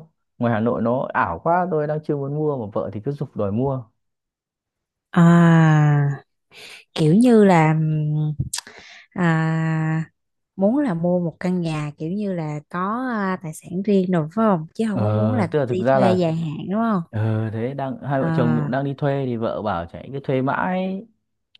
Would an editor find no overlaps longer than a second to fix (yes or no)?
no